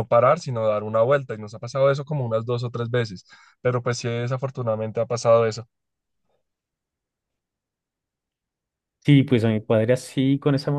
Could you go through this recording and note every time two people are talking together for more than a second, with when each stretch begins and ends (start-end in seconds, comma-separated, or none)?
none